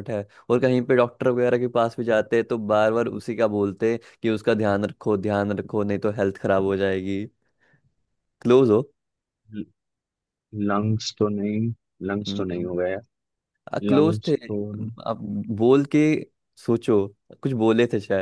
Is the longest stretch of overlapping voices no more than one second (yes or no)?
yes